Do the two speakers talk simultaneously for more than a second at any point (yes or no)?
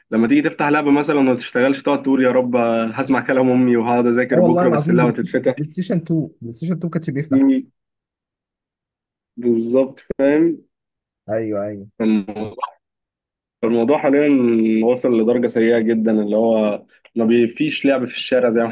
yes